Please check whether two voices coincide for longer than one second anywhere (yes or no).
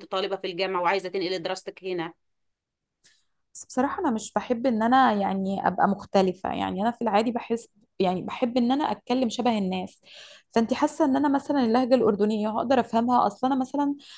no